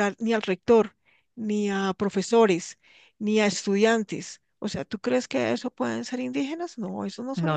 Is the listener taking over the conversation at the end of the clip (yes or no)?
yes